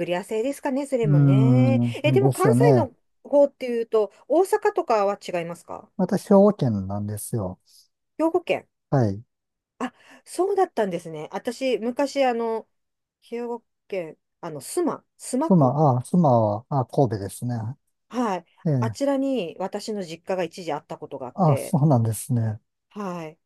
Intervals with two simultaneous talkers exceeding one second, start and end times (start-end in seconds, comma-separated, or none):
1.0-2.9